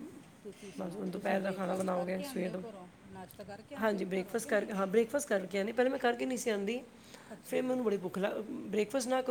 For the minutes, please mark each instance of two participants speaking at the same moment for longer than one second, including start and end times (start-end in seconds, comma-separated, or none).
0.8-2.6